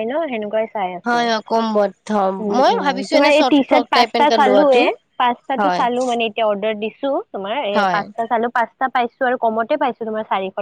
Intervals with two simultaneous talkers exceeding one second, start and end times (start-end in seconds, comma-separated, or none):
1.1-4.8